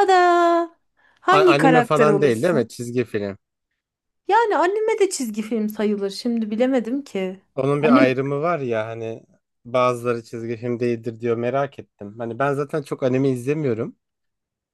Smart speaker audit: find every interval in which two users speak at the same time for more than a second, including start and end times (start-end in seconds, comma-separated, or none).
1.3-2.7